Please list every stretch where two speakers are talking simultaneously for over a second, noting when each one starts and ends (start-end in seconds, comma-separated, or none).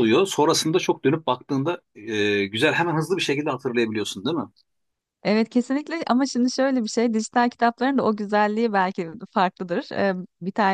none